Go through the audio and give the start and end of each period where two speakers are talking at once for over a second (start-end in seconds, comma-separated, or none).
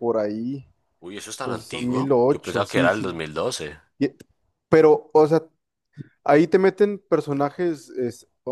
1.4-3.1